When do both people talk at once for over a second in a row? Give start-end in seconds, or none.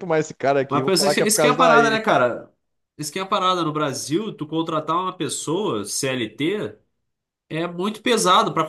0.7-2.0